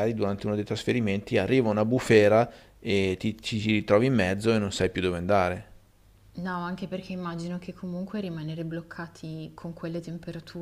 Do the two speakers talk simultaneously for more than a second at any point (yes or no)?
no